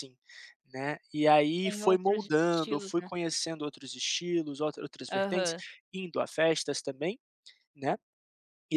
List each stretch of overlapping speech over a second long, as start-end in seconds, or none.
1.6-3.1